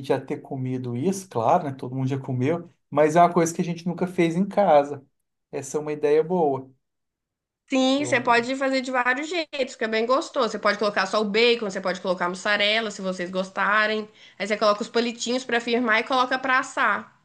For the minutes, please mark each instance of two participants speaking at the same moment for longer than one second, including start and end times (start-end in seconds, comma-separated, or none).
none